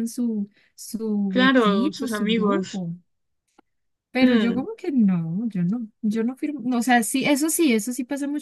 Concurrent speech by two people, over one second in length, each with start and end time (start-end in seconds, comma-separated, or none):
1.3-2.8